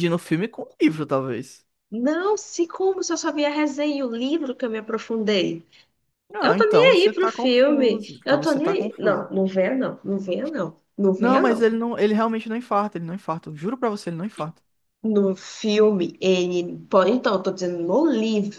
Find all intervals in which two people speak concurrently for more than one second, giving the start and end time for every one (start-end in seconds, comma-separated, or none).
6.4-9.3